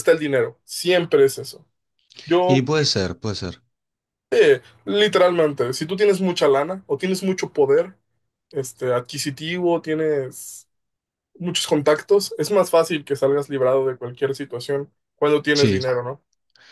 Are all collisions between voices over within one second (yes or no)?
yes